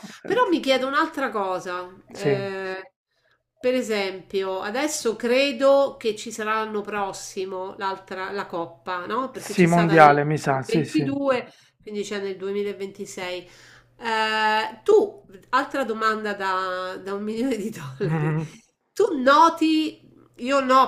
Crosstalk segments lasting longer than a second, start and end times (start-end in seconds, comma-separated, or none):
9.3-11.0